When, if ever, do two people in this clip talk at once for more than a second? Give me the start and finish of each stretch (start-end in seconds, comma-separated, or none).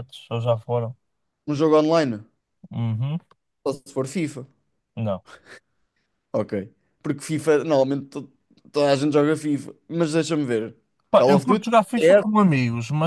none